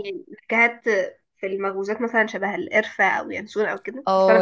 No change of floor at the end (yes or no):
no